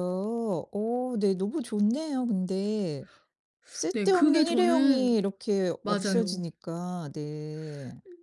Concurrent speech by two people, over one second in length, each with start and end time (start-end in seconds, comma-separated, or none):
3.9-5.2